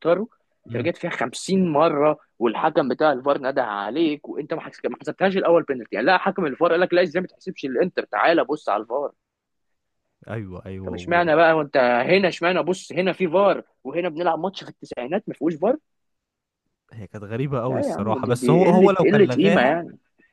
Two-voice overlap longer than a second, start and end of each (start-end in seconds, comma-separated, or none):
17.7-19.8